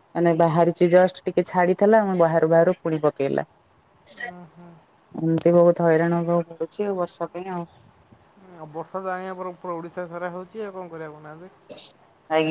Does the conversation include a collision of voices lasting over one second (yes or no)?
no